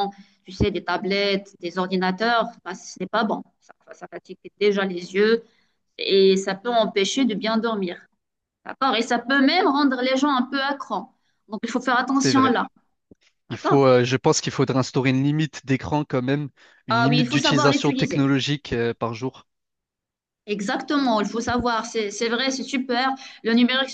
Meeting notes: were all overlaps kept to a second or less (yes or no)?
no